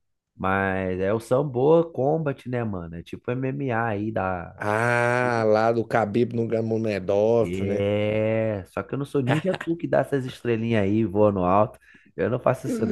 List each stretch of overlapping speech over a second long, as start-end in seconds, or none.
none